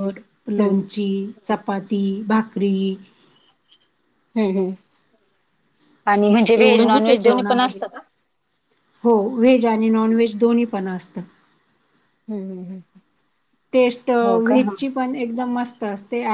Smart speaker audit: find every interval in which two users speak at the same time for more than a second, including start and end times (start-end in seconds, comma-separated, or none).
6.5-7.8